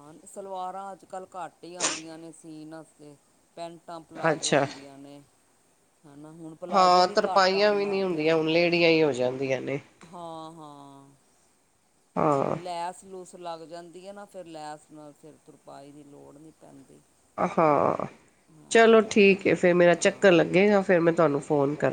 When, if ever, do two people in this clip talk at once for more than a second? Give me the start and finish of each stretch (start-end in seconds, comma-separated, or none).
6.7-8.3